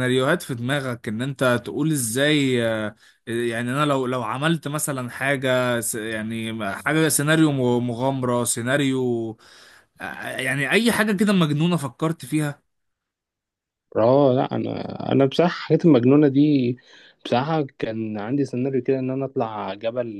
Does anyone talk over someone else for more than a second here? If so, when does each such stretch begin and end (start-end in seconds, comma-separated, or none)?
none